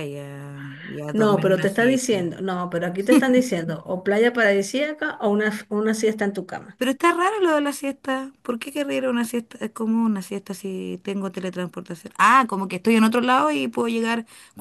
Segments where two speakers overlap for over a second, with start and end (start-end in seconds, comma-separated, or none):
1.1-2.4